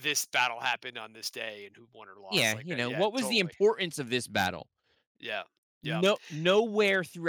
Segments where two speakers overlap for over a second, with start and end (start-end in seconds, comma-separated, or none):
2.3-3.5